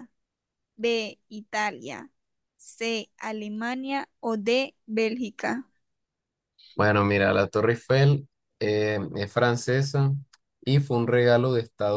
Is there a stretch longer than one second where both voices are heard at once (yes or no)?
no